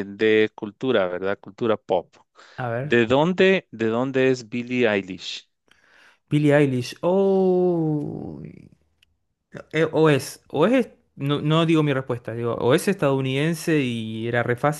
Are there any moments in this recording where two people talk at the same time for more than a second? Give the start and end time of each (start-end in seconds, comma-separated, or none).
none